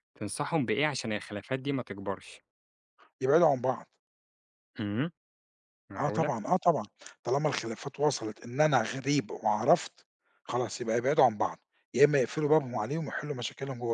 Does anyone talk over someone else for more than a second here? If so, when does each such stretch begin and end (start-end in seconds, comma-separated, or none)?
none